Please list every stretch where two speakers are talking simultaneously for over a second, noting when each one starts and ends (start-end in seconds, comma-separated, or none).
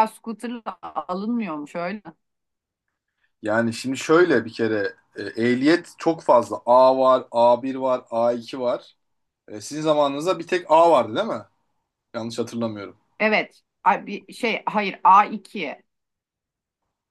none